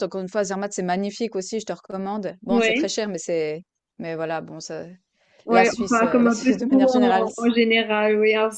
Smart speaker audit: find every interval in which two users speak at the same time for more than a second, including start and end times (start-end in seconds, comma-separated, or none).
5.5-7.5